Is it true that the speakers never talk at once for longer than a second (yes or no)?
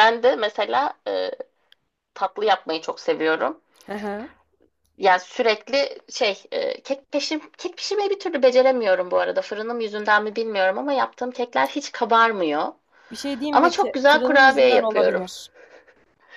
no